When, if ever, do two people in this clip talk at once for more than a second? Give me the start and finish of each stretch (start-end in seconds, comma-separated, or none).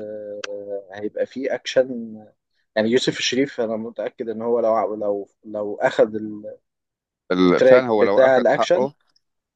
7.4-8.9